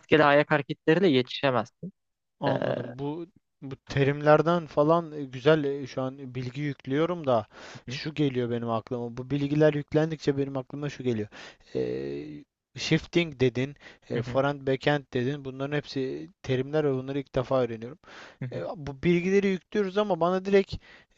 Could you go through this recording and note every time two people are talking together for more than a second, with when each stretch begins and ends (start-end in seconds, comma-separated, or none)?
none